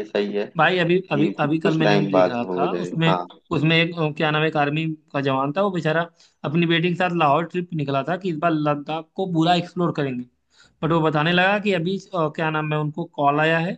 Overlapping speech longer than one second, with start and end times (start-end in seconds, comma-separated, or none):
0.9-3.1